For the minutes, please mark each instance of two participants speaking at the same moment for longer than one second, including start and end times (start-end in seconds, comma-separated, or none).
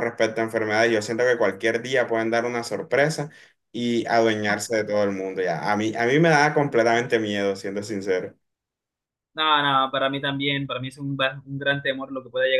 none